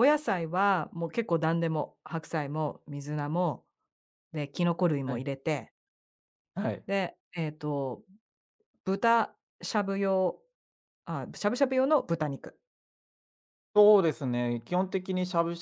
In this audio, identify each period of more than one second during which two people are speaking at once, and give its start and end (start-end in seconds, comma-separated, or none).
none